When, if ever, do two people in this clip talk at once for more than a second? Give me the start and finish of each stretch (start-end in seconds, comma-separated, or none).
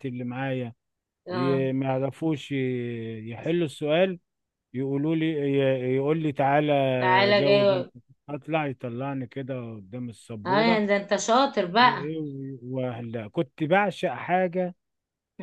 none